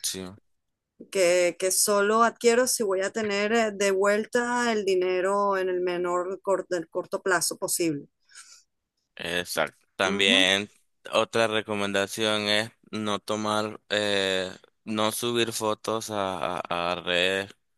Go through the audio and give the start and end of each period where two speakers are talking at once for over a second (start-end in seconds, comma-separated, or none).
none